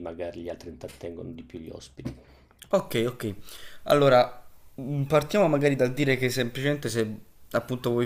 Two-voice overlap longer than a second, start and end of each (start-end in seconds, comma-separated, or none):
none